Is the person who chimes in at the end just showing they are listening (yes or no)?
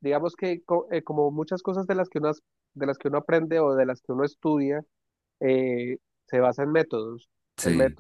yes